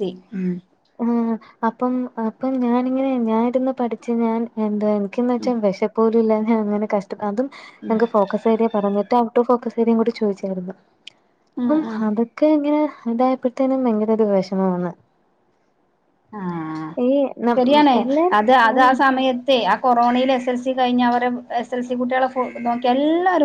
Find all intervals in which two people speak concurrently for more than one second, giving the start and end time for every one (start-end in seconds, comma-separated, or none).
none